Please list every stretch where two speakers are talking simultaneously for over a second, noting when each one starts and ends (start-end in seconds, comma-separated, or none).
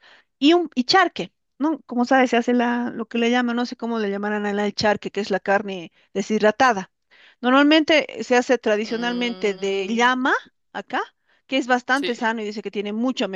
8.8-10.1